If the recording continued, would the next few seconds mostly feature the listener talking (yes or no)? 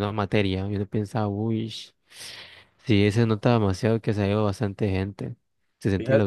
yes